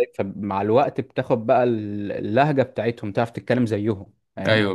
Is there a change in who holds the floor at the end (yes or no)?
yes